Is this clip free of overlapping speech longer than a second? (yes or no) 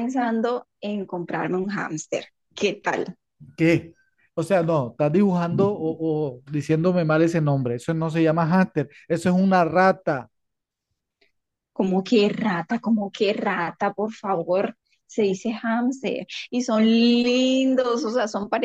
yes